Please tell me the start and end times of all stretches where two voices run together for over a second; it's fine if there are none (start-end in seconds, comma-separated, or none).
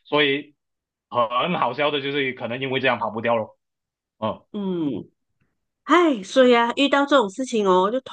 none